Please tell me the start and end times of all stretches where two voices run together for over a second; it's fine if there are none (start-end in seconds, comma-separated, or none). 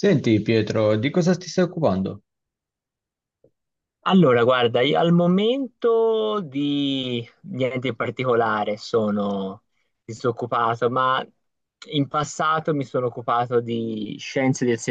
none